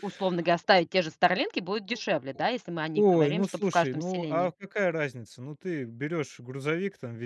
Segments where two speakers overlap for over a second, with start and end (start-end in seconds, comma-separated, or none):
2.9-4.5